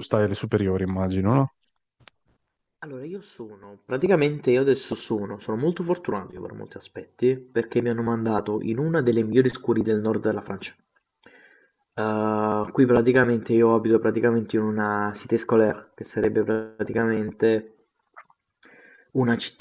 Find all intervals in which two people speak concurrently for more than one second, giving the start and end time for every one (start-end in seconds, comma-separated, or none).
none